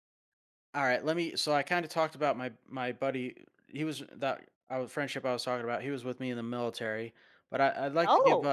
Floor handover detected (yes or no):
no